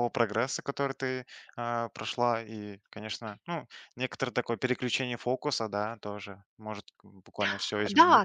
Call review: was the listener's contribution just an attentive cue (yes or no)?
no